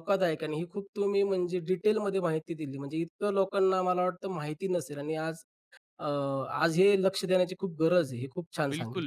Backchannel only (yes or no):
no